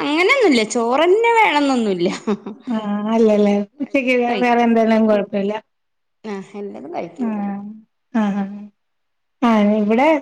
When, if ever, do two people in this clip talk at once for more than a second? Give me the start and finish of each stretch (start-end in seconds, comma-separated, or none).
none